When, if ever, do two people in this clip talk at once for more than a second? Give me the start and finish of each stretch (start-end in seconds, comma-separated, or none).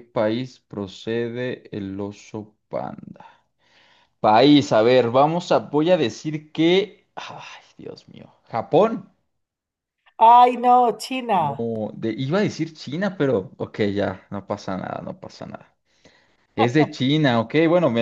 none